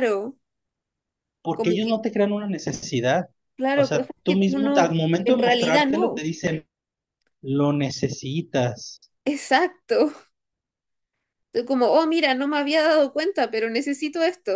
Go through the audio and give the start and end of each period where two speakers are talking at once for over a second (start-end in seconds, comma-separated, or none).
3.7-6.2